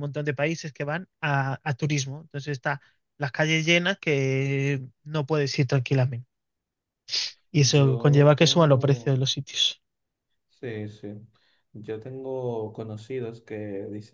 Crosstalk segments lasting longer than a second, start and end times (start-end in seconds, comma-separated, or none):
7.8-9.2